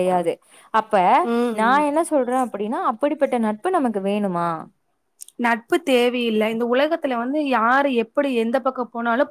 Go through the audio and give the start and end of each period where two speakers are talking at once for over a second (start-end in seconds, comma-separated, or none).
none